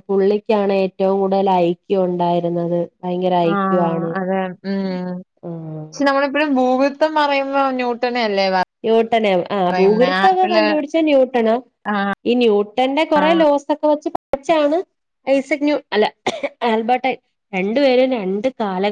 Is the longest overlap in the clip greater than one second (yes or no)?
no